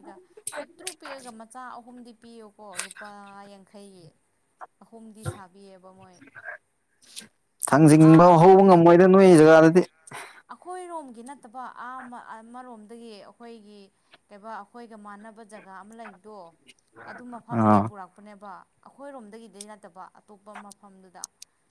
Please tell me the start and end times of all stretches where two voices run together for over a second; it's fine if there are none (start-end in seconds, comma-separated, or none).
none